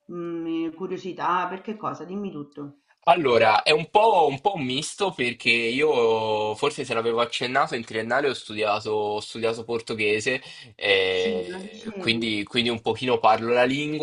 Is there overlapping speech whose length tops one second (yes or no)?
yes